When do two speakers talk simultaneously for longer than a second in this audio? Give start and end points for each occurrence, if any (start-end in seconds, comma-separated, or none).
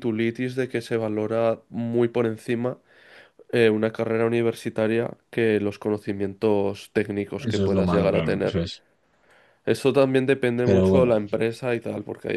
7.4-8.6